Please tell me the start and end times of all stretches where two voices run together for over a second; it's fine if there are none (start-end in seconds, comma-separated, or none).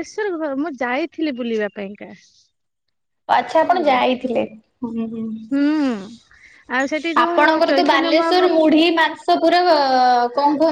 7.2-8.6